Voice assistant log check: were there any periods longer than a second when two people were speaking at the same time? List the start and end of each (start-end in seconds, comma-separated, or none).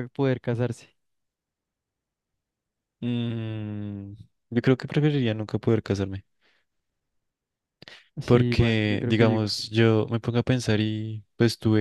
8.2-9.6